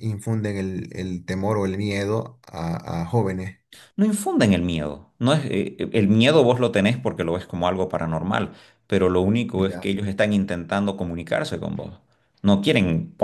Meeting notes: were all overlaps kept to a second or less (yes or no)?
yes